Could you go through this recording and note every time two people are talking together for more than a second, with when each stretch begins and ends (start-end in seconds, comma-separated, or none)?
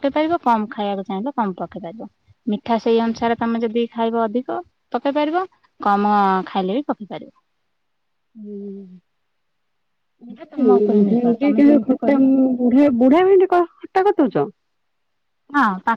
10.3-12.2